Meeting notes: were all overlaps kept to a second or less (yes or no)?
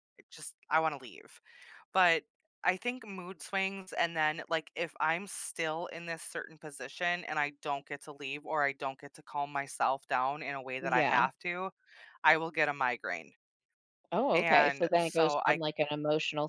no